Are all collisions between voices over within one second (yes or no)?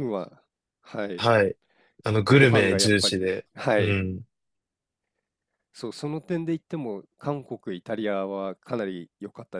no